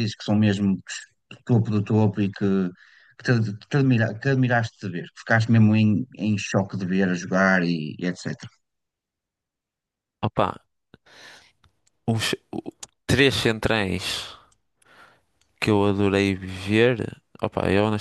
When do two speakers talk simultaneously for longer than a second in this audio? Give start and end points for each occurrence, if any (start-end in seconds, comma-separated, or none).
none